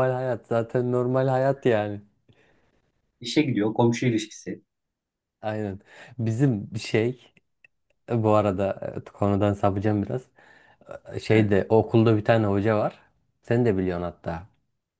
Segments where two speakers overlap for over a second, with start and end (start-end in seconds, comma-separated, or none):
none